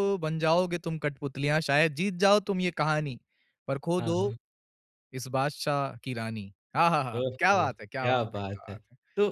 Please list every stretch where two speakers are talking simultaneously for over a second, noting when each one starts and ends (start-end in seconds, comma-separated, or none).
7.2-8.7